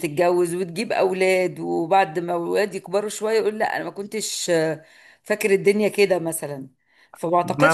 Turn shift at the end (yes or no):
no